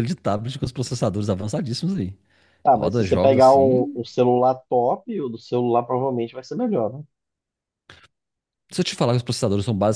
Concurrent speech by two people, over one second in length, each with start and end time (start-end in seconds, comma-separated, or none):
2.7-4.0